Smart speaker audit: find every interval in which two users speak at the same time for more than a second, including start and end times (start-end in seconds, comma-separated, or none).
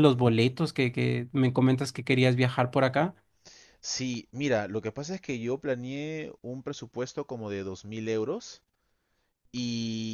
none